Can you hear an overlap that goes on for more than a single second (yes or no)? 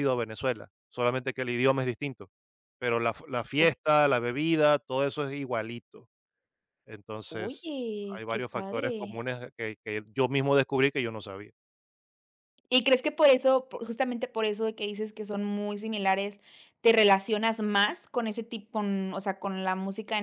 yes